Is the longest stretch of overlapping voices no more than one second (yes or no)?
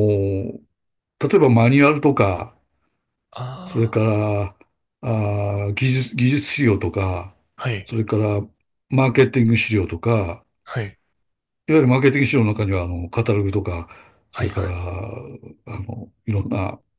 yes